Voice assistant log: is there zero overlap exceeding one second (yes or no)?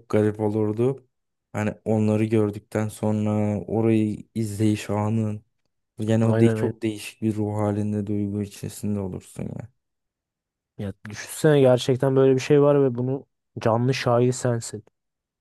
yes